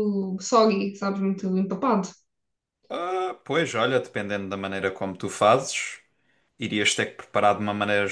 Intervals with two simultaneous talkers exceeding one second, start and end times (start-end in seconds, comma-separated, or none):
none